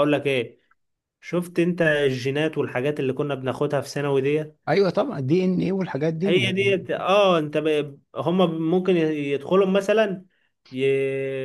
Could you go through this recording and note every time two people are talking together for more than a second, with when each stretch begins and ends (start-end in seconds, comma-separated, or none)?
none